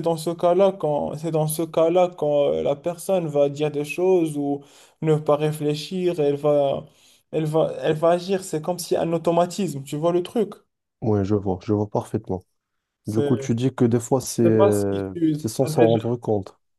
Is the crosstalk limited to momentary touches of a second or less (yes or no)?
no